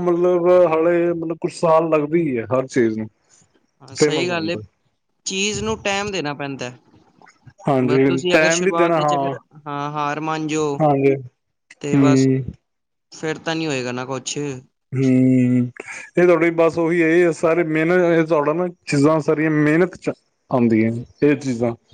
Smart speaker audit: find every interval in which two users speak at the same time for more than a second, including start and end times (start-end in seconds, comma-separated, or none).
7.7-9.3